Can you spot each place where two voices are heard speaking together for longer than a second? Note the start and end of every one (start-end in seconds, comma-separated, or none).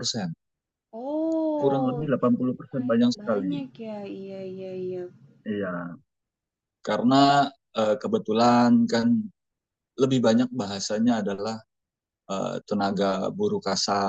1.6-3.5